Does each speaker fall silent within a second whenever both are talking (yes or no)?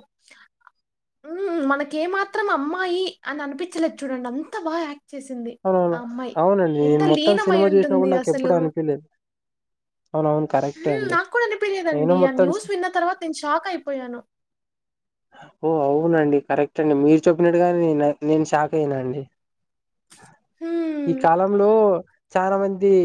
no